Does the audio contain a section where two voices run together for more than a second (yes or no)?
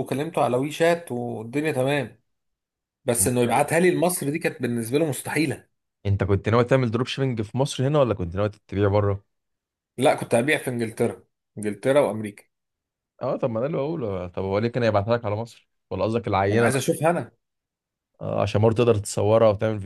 no